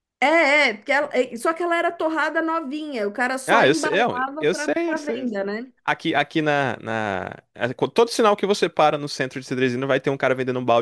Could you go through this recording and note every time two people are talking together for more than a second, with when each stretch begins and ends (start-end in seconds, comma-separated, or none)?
3.5-5.4